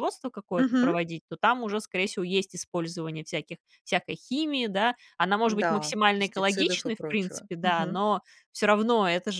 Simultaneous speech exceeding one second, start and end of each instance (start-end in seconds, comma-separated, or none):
5.5-8.1